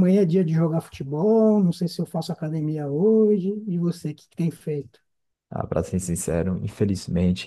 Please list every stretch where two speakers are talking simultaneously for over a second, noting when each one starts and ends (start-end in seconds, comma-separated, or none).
none